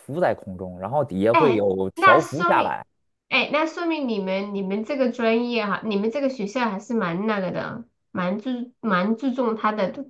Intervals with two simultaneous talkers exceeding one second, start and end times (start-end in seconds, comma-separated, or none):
1.3-2.8